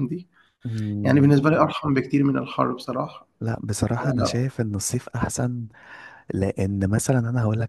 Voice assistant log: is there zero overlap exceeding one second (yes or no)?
yes